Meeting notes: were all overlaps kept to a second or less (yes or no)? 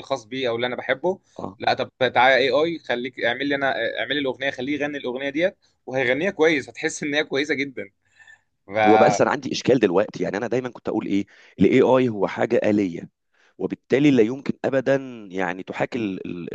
yes